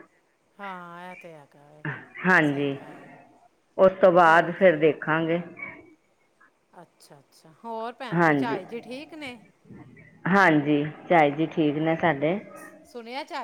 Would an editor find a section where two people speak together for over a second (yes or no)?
no